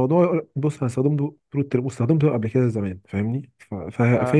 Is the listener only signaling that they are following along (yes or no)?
yes